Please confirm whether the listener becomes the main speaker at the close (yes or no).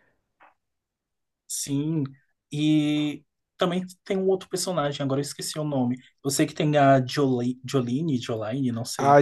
yes